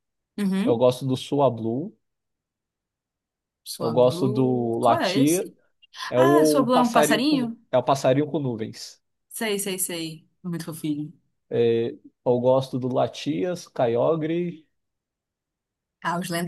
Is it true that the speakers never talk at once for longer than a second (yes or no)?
no